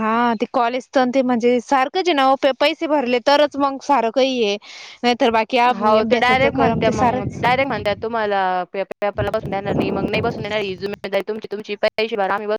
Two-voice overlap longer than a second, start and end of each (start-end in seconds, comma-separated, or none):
5.8-7.4